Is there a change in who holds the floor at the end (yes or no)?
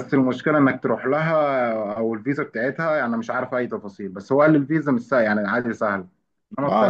yes